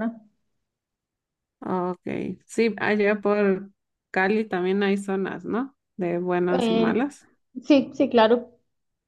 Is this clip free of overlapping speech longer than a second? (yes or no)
yes